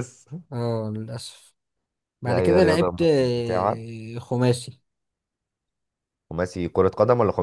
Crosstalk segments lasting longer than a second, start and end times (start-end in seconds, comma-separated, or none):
2.2-3.8